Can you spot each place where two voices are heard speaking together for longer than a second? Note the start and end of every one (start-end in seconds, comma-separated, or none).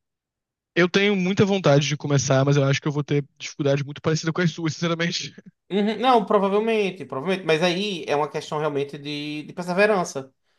none